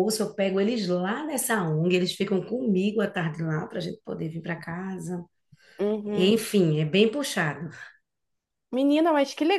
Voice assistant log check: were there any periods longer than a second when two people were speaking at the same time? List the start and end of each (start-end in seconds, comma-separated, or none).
none